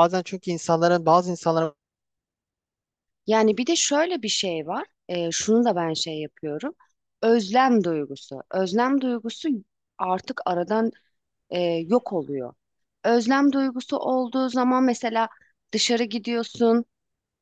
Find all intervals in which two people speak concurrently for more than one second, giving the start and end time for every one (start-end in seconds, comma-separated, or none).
none